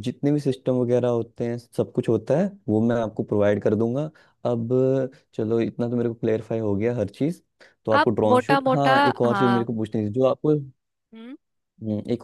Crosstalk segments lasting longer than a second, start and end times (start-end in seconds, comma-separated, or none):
8.0-9.7